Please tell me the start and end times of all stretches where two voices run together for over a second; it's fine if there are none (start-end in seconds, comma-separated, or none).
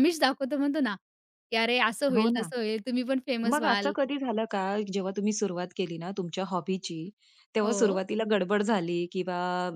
none